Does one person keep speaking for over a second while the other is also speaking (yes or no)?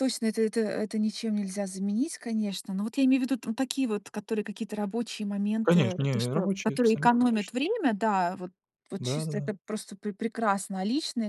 yes